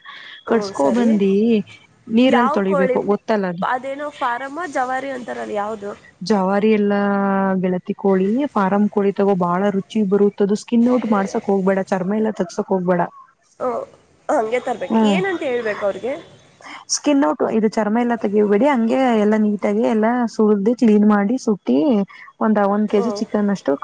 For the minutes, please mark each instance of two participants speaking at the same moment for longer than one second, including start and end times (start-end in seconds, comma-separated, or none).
none